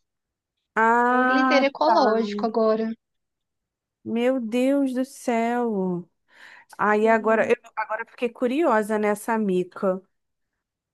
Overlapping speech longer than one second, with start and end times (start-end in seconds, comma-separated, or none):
none